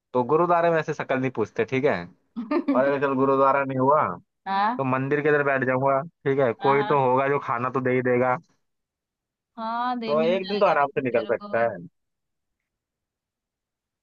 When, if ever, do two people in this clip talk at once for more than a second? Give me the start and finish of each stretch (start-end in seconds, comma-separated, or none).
10.1-11.6